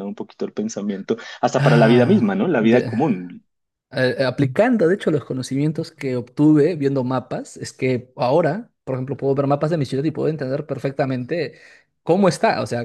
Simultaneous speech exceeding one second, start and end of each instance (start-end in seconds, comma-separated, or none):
1.6-2.9